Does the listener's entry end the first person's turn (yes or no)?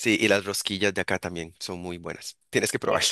yes